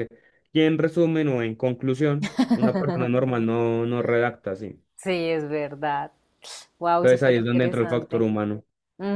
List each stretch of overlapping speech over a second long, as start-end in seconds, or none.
7.0-8.3